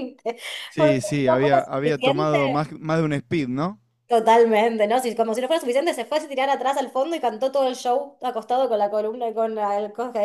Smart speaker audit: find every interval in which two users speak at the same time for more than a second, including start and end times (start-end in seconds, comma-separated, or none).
0.8-2.4